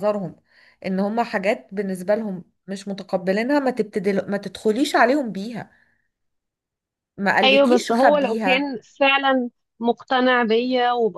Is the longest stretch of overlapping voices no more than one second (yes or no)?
no